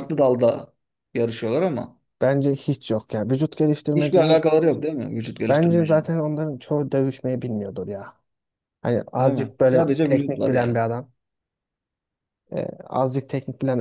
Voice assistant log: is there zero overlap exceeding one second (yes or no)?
no